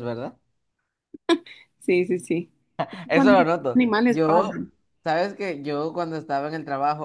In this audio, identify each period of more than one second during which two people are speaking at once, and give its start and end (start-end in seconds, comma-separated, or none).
3.1-4.7